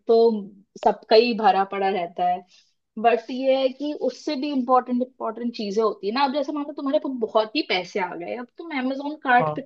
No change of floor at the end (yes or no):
yes